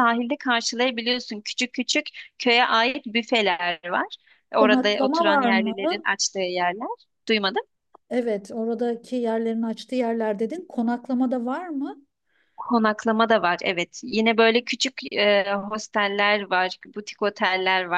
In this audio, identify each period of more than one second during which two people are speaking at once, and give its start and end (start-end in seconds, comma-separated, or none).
4.6-6.0